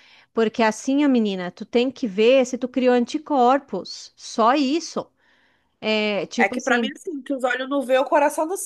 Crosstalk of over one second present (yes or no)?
no